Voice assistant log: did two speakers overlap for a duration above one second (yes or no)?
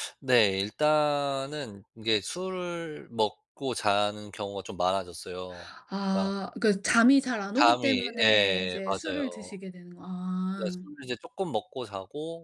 yes